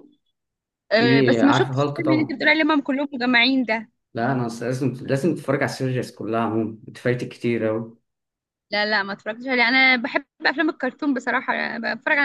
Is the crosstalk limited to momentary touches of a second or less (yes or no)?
no